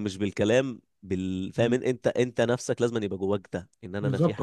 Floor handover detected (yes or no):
yes